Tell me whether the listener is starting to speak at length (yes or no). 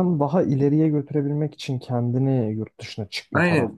yes